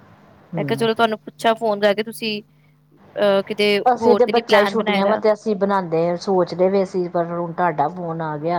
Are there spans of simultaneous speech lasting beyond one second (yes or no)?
yes